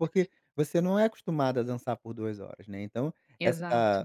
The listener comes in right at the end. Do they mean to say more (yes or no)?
no